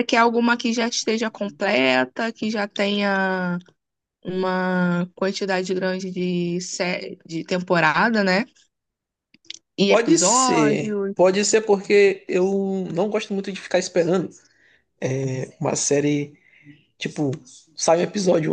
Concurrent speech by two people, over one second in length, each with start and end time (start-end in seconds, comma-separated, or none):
9.9-11.1